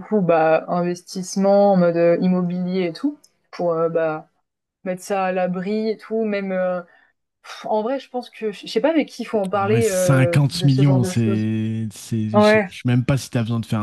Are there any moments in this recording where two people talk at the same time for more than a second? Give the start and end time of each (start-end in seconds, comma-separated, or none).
9.5-11.5